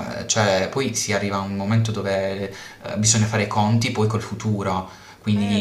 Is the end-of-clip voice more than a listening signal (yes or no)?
yes